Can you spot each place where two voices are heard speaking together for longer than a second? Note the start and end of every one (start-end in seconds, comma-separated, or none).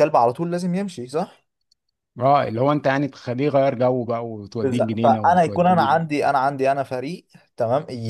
4.6-6.0